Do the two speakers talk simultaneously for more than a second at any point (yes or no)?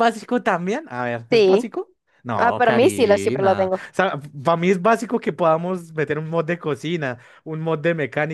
yes